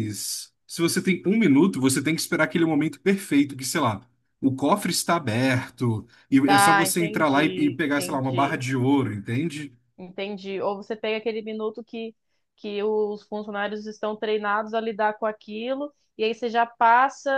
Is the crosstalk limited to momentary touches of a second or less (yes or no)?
no